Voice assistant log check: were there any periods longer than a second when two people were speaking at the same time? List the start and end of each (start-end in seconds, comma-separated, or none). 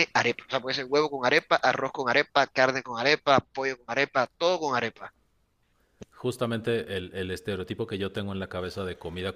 none